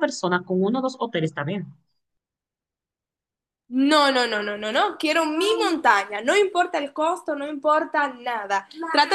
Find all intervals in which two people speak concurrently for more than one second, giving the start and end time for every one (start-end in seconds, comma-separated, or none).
none